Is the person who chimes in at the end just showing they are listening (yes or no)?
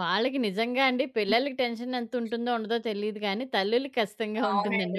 no